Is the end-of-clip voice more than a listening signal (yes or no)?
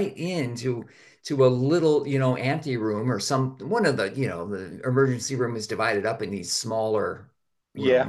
no